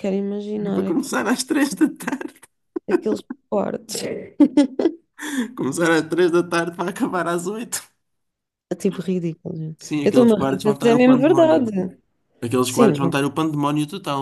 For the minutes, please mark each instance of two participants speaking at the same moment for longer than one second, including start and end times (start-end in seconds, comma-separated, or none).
9.8-11.7